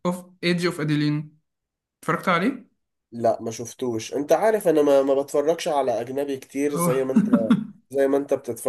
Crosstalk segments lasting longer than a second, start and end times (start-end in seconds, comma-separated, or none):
none